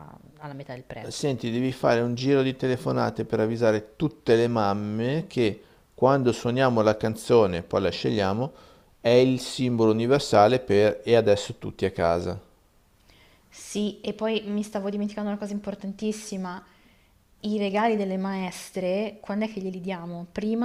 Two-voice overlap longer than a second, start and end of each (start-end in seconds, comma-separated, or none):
none